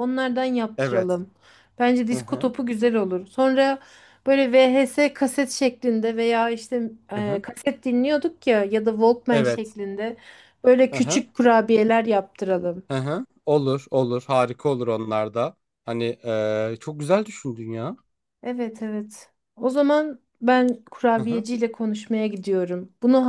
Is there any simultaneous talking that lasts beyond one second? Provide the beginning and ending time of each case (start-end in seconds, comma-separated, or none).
none